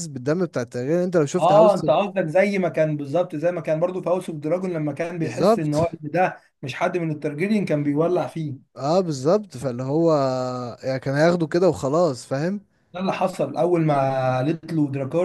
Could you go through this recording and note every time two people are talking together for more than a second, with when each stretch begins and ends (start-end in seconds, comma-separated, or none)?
none